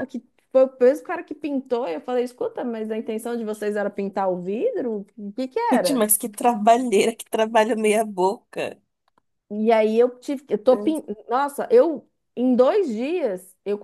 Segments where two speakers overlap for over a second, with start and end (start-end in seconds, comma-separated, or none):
none